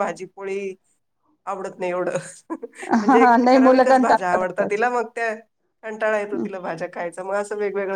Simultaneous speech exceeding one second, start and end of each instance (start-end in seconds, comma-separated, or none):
3.1-4.8